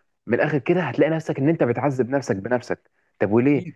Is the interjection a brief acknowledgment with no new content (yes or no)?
yes